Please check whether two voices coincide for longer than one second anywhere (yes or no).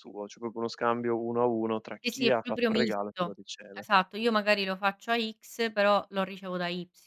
yes